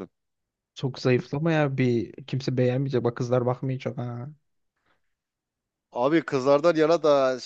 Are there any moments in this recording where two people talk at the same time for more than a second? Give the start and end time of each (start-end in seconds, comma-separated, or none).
none